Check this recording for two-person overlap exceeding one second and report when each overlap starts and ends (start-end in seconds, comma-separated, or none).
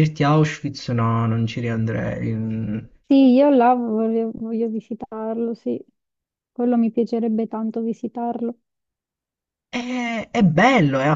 none